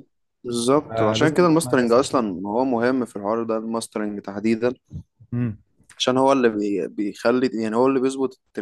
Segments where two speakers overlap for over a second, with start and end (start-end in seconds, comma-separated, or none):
0.9-2.4